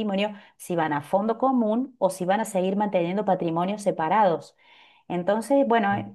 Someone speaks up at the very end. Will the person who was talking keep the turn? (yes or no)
yes